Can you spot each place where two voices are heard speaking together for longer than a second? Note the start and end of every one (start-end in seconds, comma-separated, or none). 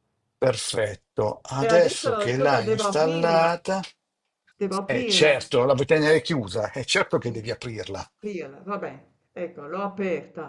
1.6-3.5